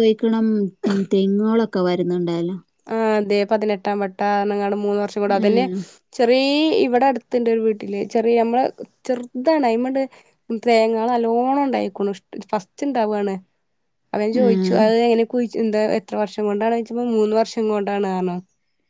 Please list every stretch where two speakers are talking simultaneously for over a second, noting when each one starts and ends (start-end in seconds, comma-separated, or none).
none